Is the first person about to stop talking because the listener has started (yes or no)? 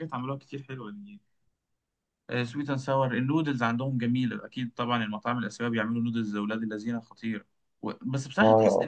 no